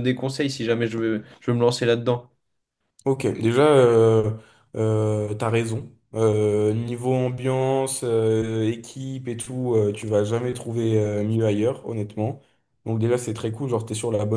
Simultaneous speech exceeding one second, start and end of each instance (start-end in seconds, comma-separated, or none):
none